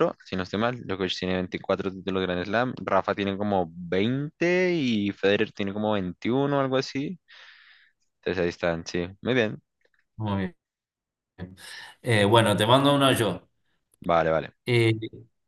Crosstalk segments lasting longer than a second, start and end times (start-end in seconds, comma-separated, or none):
none